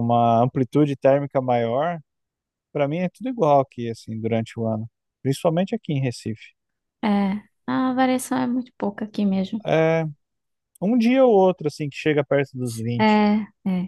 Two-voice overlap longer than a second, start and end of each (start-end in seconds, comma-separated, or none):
none